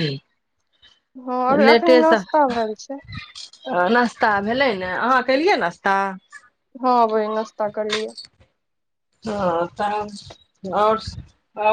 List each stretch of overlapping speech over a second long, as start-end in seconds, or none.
none